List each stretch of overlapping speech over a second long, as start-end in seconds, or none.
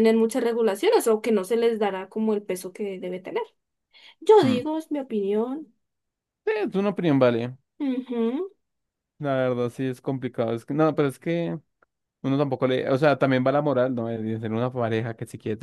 none